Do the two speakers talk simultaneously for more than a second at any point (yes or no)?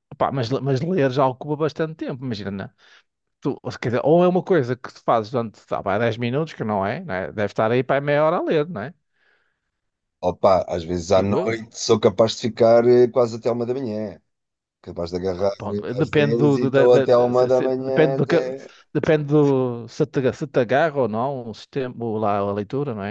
yes